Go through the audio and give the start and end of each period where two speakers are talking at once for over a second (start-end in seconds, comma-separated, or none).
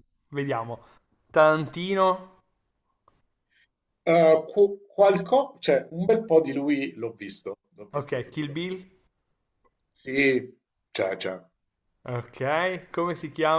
none